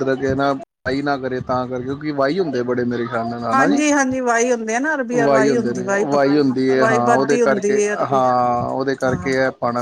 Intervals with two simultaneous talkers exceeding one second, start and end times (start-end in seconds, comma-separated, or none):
6.8-8.2